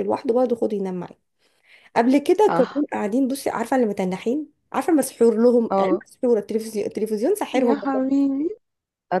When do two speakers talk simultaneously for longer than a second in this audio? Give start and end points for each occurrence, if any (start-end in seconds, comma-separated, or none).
none